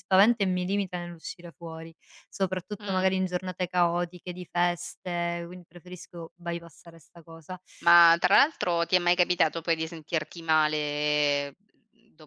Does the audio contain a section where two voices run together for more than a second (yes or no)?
no